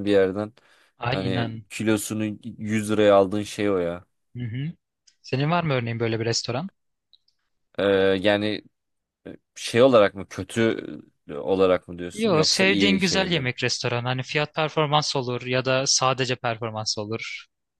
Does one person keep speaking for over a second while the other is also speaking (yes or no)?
yes